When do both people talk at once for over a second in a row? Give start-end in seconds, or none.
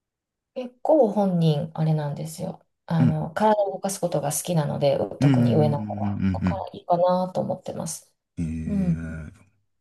5.2-6.6